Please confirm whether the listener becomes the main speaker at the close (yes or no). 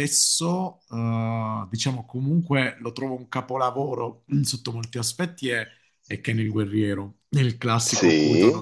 yes